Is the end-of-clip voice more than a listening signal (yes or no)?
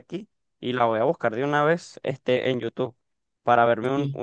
no